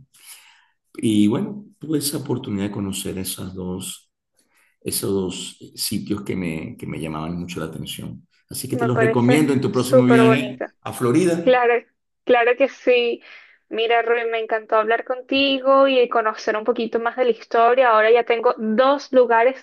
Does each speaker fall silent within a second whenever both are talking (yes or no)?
no